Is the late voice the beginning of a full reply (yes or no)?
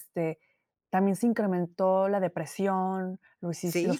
no